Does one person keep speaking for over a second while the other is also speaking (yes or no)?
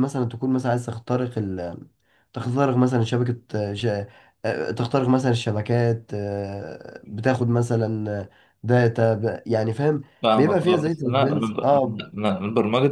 yes